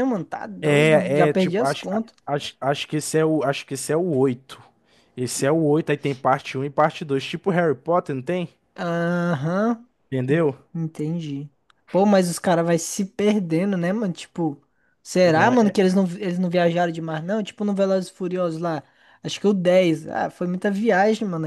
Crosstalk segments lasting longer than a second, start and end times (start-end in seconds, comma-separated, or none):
0.6-2.1